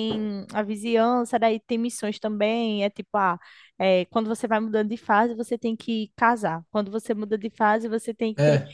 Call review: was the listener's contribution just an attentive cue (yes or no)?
yes